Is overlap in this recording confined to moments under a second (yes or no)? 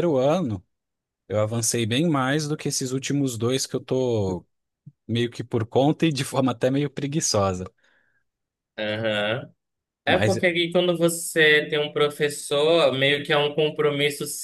yes